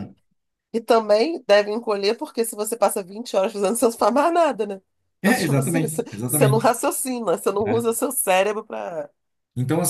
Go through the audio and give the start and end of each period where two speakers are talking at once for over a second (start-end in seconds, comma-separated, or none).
5.2-6.7